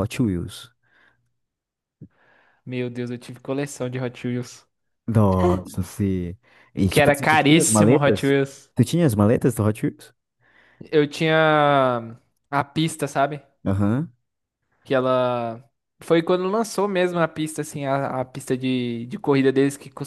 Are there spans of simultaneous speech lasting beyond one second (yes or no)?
yes